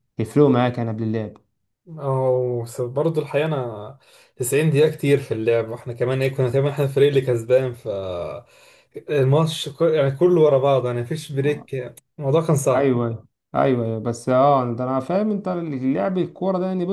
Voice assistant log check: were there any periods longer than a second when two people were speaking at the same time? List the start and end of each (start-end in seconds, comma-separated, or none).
none